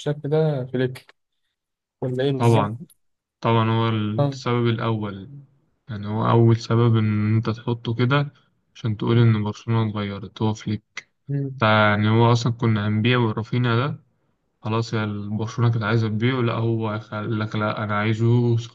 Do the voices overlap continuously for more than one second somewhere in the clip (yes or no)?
no